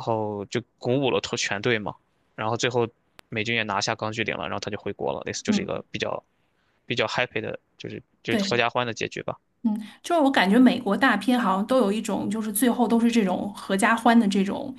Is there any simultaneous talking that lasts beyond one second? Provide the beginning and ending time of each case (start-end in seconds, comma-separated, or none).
none